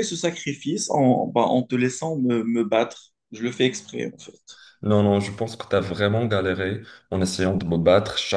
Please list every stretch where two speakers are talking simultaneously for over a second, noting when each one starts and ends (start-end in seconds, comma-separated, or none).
none